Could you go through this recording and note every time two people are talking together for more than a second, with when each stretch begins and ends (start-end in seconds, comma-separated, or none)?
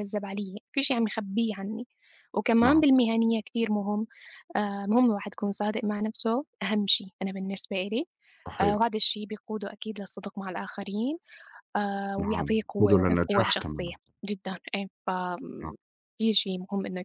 12.2-13.9